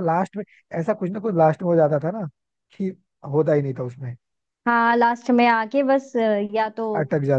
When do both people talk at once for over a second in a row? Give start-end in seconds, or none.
none